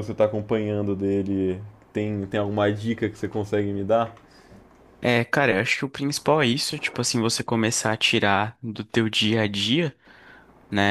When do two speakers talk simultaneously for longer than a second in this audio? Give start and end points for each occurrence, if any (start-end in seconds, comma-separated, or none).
none